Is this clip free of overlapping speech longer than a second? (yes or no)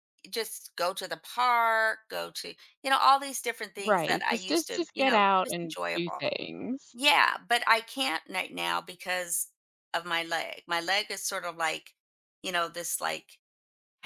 no